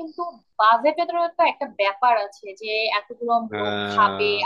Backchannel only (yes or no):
yes